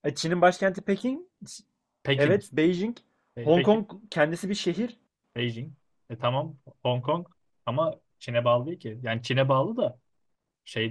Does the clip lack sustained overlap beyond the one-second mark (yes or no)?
yes